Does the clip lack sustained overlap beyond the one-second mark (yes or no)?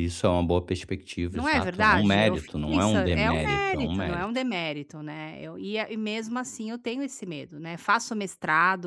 no